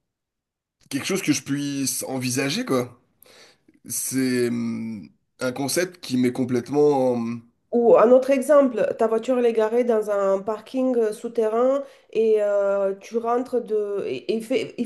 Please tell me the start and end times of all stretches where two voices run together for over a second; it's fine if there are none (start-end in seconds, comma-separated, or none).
none